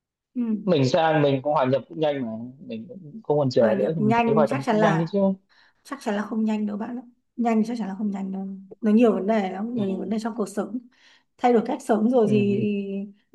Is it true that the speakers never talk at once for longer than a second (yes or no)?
no